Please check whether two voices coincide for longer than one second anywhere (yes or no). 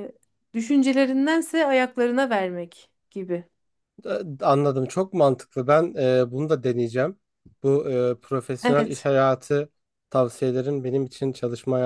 no